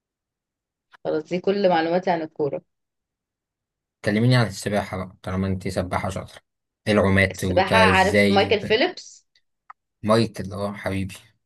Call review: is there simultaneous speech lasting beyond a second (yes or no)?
yes